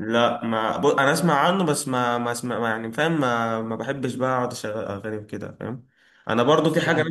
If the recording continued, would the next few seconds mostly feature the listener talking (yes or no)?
no